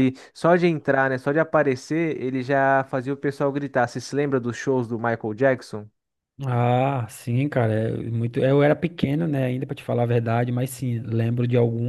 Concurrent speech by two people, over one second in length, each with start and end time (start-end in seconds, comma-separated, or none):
none